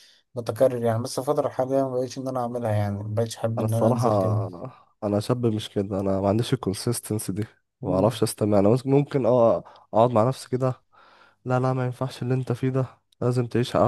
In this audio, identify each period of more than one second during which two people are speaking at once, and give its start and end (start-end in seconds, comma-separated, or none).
none